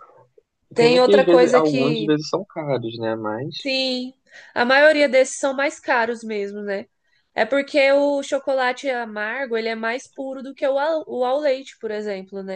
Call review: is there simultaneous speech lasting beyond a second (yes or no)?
yes